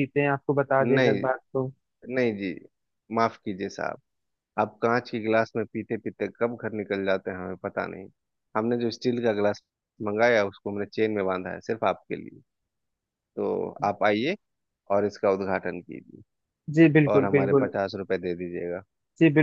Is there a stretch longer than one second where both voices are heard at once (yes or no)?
no